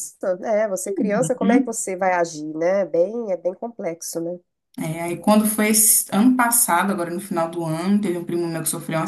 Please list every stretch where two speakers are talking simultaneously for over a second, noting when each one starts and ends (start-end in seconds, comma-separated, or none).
none